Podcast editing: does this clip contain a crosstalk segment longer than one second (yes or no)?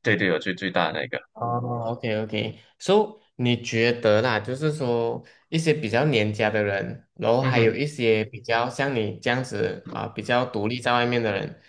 no